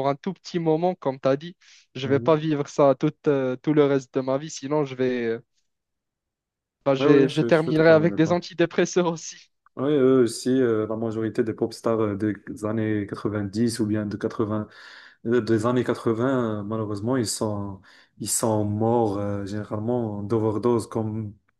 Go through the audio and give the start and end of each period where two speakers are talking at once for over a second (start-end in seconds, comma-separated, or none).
7.0-8.4